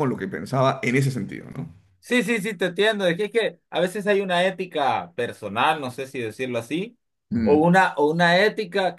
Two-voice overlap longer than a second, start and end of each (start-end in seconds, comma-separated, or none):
none